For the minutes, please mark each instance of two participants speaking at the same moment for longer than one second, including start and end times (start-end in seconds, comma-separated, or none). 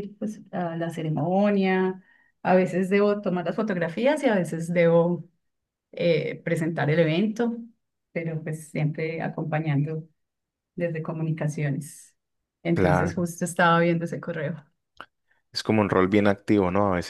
none